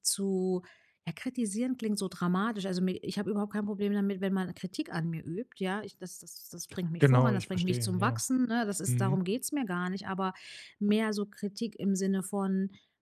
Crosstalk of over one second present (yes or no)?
yes